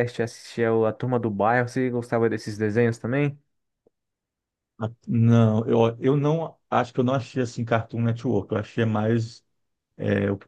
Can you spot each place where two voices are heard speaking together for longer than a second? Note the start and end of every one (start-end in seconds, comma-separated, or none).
none